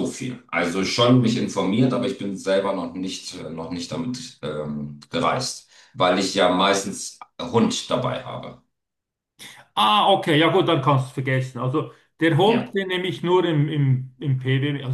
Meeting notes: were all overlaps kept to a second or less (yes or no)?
yes